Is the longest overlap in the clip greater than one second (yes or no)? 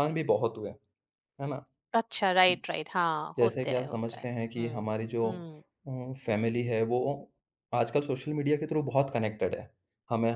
yes